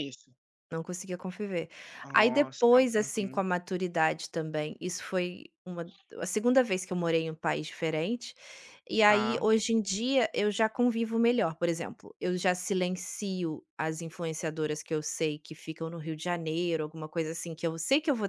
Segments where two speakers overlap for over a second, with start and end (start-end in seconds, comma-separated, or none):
2.1-3.4